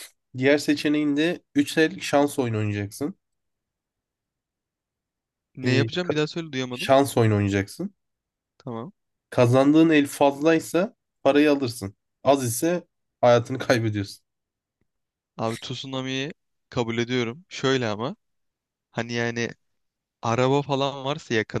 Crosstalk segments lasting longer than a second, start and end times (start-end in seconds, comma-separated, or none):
none